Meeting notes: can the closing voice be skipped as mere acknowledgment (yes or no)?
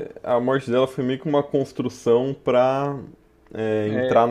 yes